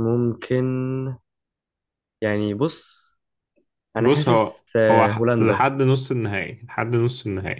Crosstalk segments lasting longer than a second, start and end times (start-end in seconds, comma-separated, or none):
4.0-5.7